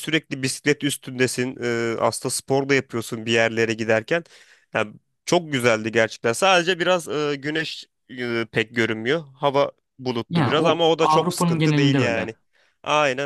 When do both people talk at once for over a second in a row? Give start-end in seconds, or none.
10.3-12.3